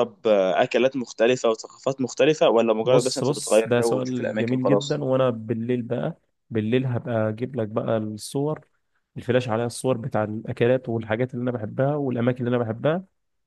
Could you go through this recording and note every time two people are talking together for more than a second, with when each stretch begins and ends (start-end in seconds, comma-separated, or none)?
2.8-5.0